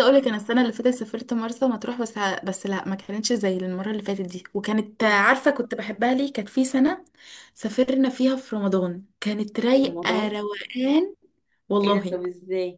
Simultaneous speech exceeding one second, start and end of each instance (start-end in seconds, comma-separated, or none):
none